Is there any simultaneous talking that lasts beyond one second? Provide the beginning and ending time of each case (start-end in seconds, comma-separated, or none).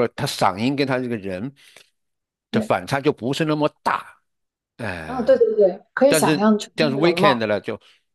6.1-7.4